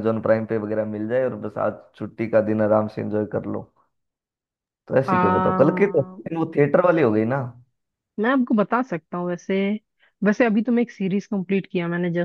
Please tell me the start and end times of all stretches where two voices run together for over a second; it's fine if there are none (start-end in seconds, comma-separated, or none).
none